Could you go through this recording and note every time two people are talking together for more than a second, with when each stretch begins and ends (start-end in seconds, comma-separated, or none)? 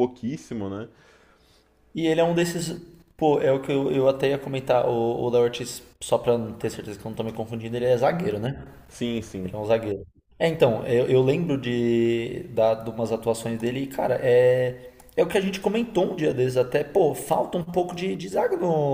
none